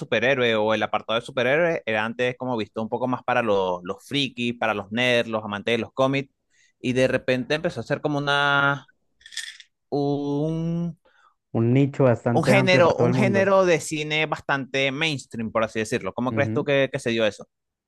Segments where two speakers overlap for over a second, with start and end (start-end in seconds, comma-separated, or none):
12.3-13.5